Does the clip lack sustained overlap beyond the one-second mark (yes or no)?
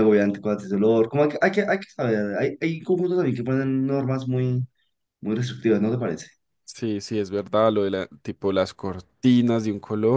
yes